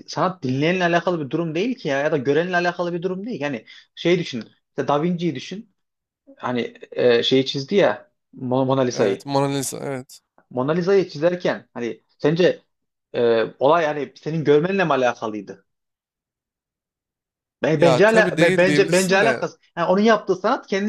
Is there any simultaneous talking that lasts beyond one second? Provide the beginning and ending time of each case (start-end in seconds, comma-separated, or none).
17.8-19.4